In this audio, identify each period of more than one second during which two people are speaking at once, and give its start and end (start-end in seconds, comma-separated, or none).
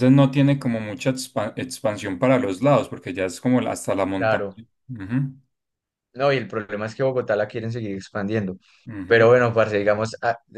none